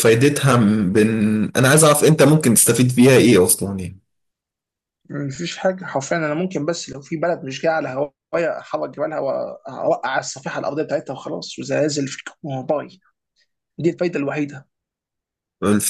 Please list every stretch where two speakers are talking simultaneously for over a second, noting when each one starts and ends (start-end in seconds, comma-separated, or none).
none